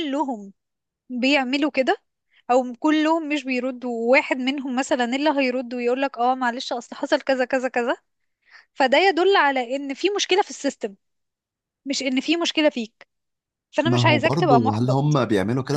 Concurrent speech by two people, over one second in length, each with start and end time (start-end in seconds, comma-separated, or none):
13.8-15.2